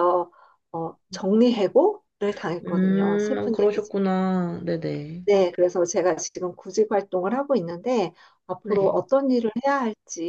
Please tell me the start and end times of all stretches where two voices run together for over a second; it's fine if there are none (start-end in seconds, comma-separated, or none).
2.6-3.9